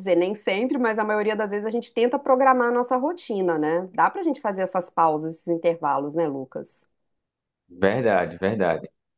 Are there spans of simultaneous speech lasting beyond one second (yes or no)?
no